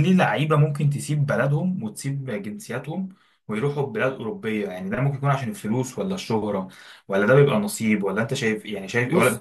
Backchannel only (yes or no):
yes